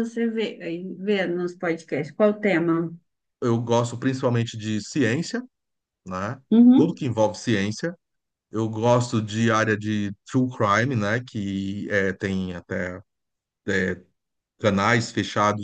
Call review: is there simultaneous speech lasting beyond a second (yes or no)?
no